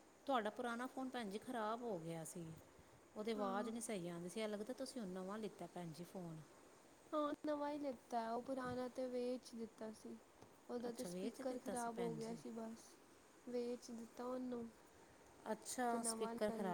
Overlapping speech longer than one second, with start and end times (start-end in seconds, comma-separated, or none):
10.9-12.4